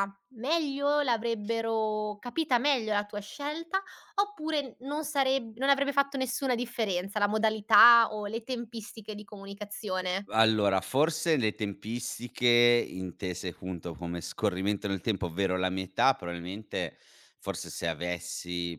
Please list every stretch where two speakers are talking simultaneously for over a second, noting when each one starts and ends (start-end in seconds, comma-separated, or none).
none